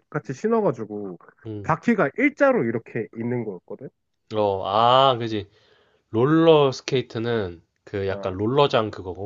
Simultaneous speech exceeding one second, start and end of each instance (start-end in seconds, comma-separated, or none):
none